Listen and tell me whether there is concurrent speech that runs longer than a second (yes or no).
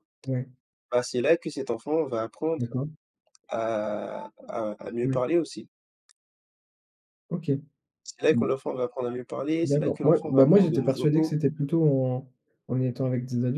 yes